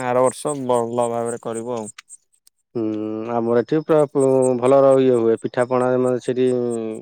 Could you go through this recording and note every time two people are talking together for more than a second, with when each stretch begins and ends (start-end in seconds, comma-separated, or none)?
none